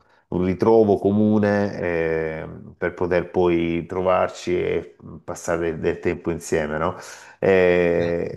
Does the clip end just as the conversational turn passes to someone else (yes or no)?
no